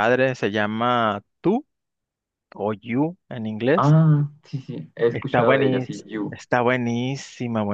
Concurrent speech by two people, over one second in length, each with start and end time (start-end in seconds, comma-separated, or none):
5.1-6.4